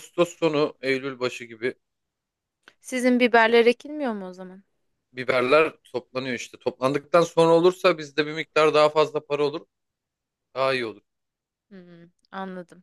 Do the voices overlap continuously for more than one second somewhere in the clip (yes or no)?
no